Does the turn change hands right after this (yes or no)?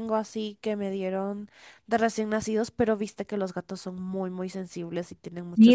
yes